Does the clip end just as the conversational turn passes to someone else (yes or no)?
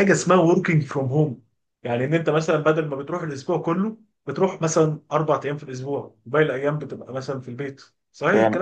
yes